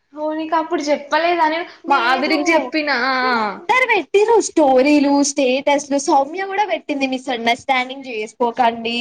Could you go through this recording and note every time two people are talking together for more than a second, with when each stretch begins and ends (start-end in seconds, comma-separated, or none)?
none